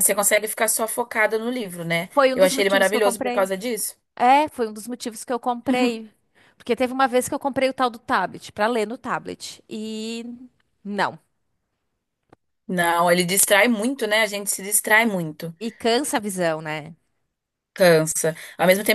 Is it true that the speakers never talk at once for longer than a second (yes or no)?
no